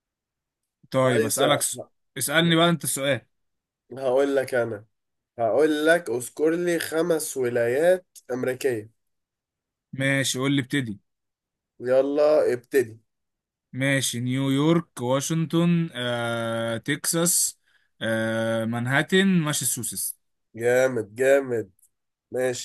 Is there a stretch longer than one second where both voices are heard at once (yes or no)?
no